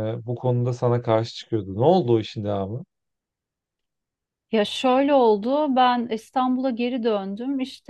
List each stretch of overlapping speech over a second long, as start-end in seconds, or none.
none